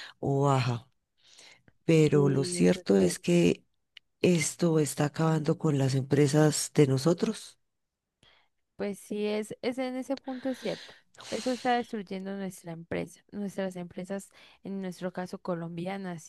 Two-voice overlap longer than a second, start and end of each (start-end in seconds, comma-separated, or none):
2.1-3.4